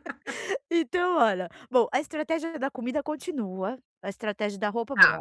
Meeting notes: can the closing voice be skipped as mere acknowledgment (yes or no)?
yes